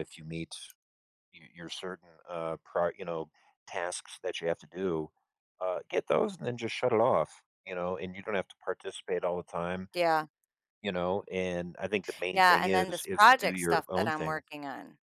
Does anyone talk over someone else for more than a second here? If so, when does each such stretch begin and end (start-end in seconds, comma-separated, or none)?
12.3-14.4